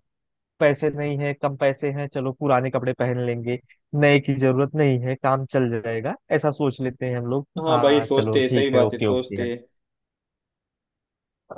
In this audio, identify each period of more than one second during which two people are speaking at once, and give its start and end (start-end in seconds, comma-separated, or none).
7.6-9.5